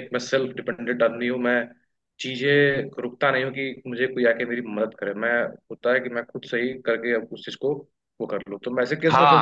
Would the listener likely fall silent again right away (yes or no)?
no